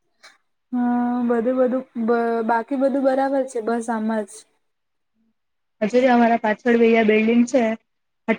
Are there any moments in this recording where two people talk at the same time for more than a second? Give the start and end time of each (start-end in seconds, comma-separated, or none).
none